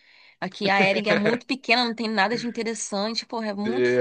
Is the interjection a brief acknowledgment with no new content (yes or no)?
no